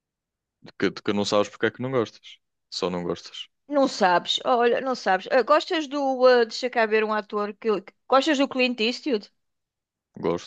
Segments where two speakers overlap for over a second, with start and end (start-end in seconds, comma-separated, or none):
none